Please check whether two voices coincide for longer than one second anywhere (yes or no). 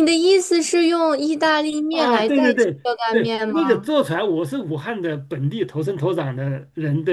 yes